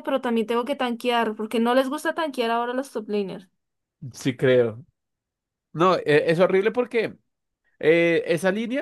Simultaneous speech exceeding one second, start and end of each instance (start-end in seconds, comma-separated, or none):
none